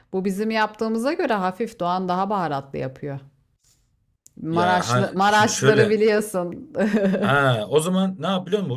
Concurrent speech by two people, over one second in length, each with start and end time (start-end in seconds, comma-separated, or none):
4.5-6.0